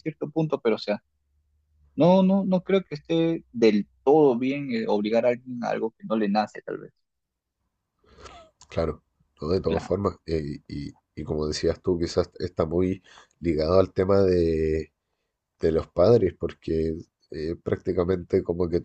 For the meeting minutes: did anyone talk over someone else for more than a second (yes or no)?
no